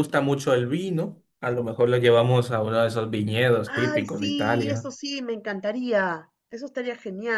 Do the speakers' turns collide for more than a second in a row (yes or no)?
yes